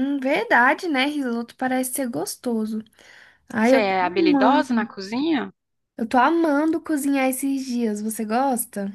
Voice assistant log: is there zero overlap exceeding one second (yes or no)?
no